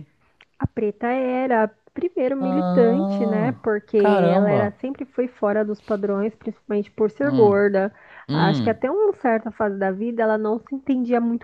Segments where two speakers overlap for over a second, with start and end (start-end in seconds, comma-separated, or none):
2.4-4.8